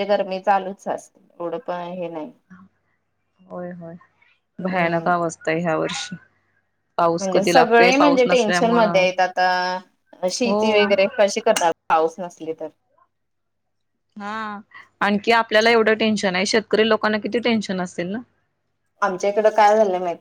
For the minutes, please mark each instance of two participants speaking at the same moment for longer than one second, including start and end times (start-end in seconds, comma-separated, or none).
7.2-9.0